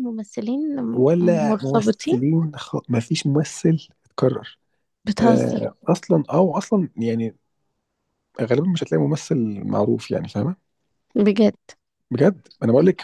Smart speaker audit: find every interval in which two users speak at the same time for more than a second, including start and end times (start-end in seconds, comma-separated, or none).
0.9-2.2